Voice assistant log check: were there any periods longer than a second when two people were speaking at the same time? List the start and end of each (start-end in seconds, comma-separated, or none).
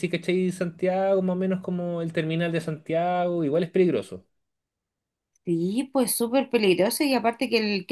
none